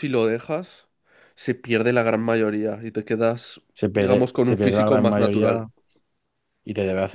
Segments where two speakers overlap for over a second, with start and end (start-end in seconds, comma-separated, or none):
3.7-5.7